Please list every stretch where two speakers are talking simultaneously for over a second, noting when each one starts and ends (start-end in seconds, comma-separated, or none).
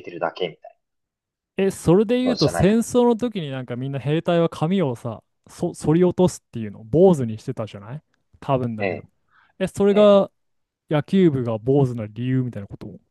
none